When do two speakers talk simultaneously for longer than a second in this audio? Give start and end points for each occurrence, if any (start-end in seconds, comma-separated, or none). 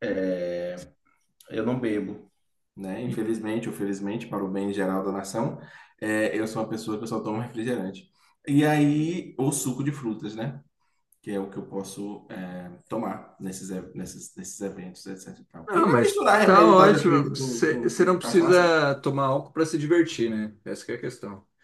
15.7-18.8